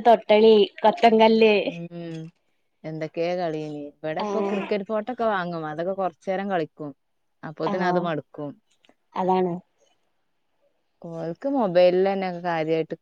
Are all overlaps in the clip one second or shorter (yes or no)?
yes